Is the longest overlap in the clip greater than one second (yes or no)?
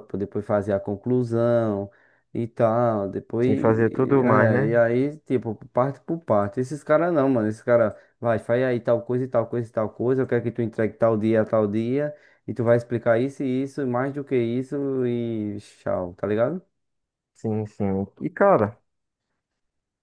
yes